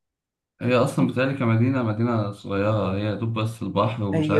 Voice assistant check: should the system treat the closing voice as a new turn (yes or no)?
yes